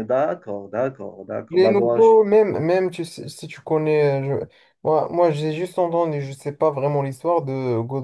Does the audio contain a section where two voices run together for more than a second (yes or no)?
no